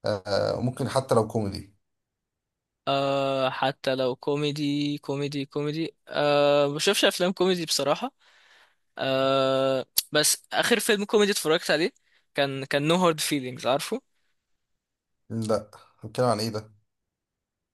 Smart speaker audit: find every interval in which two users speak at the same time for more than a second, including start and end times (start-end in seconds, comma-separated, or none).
none